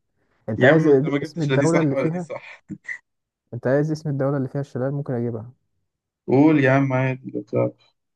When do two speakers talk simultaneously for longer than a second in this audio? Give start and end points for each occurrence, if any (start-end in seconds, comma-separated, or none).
0.6-2.3